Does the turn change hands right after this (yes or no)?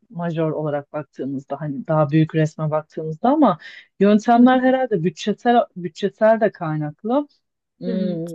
no